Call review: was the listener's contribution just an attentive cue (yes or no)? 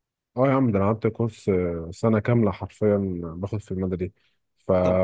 yes